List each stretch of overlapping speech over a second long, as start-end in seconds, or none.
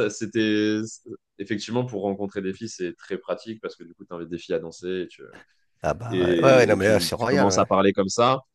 6.1-7.7